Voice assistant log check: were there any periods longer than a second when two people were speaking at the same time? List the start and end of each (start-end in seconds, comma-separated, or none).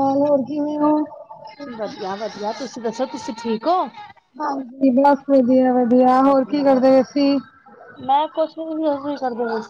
none